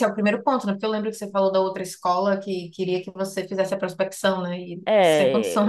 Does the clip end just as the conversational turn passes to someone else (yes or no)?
yes